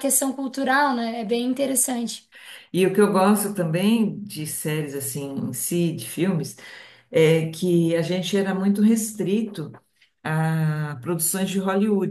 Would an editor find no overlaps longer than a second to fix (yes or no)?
yes